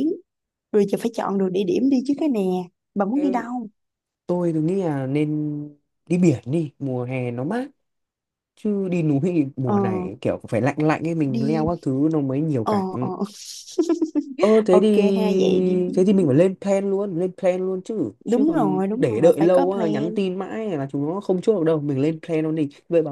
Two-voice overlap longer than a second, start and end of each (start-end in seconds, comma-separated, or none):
18.2-20.2